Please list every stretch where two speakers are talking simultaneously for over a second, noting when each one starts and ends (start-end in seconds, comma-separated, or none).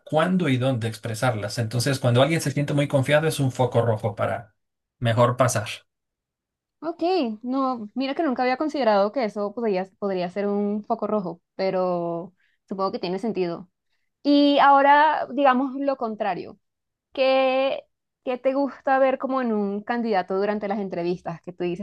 none